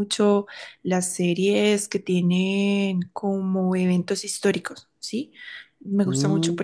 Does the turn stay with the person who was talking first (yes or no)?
yes